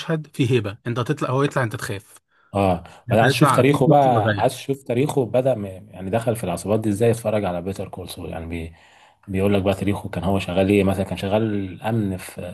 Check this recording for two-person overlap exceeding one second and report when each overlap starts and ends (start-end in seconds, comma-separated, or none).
3.1-4.6